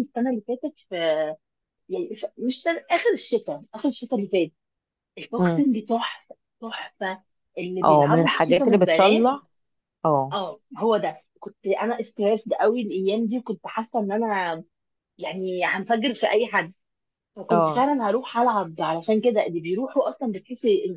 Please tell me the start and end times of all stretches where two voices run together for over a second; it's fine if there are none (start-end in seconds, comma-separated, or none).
7.8-9.3